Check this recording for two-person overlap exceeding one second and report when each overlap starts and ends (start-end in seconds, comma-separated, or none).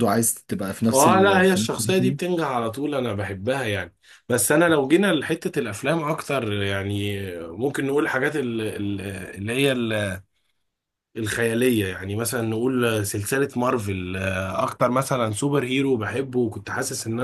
0.9-2.2